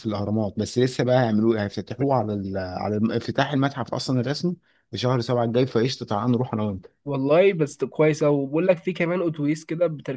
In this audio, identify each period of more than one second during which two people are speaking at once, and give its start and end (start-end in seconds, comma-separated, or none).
none